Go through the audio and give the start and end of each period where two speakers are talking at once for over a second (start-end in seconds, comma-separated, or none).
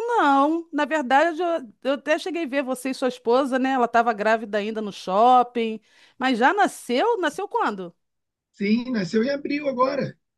none